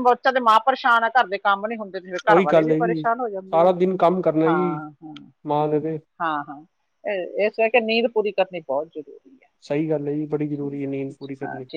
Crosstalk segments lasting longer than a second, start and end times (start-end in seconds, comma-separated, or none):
2.3-3.7